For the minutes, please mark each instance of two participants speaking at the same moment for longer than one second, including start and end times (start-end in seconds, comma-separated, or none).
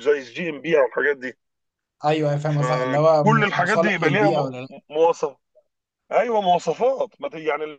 2.5-4.5